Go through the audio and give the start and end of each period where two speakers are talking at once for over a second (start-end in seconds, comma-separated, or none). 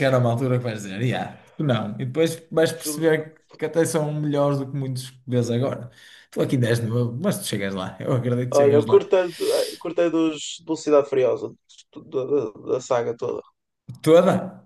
none